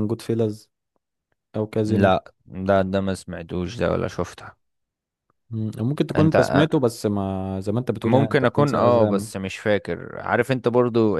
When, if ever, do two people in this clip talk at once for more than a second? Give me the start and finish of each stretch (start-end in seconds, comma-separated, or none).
8.1-9.3